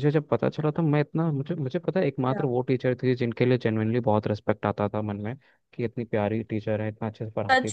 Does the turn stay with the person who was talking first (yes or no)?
no